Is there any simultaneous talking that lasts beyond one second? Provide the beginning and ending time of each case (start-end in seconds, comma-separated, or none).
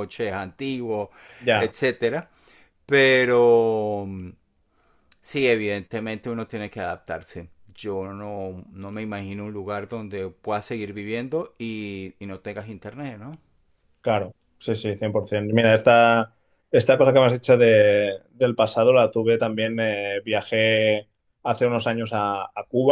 none